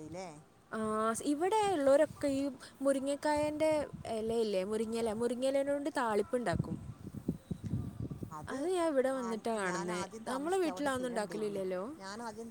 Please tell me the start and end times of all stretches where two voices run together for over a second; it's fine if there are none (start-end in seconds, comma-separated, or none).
9.7-11.6